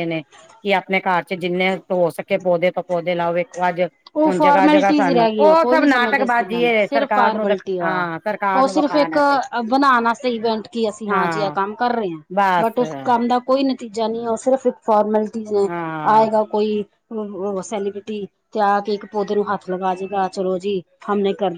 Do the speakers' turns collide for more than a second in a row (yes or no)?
yes